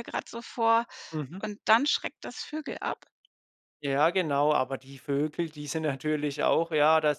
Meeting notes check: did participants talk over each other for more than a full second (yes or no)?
no